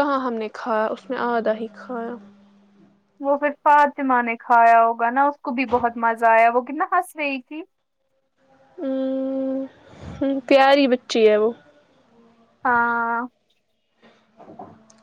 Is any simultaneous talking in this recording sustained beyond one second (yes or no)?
no